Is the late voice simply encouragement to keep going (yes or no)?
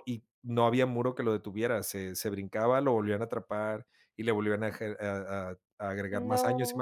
yes